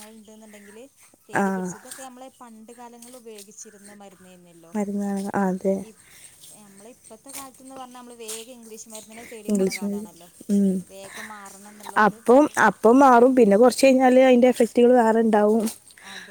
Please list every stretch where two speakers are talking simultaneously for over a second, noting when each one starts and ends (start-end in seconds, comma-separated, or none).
none